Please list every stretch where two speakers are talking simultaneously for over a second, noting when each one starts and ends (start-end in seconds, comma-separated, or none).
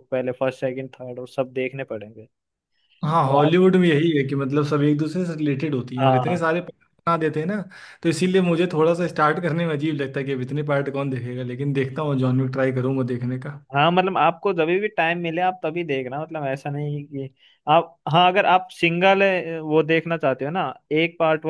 none